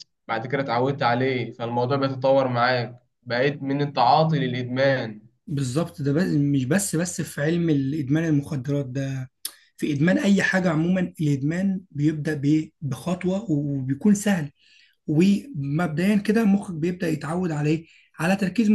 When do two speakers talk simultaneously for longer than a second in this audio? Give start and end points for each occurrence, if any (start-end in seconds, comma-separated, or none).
none